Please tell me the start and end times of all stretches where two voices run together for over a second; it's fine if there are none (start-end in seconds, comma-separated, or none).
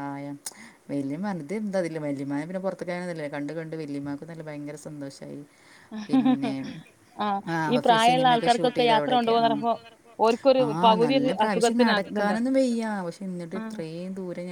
7.5-9.5, 10.7-12.4